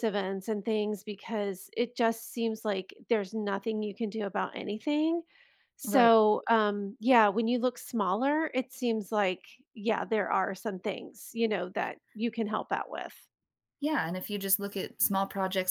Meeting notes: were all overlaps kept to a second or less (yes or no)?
yes